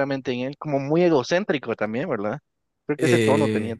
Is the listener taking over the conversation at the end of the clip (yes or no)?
yes